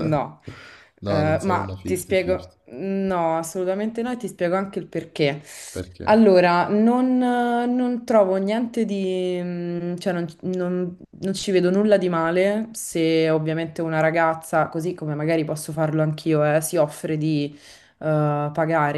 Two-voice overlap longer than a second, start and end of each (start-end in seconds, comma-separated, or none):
1.0-2.6